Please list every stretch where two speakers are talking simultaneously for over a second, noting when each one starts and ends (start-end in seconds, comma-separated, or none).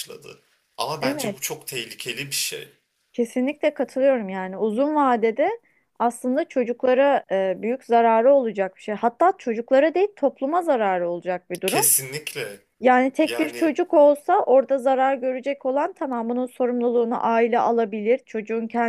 none